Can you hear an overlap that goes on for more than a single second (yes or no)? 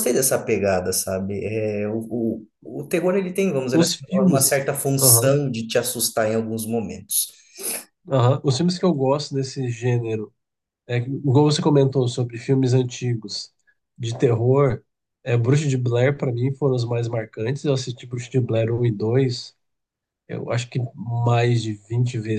yes